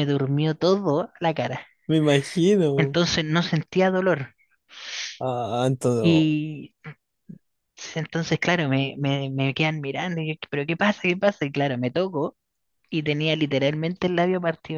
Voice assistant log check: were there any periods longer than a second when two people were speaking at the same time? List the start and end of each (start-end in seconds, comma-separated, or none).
none